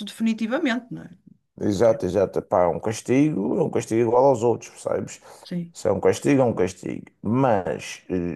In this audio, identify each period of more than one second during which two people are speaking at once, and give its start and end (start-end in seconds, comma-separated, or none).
none